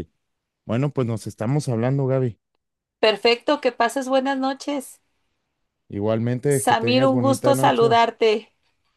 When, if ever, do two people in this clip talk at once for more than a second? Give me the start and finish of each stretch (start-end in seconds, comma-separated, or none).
6.5-8.0